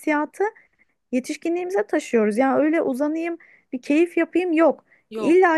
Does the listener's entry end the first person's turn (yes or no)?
no